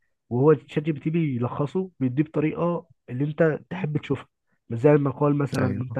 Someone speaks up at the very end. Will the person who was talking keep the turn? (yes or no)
yes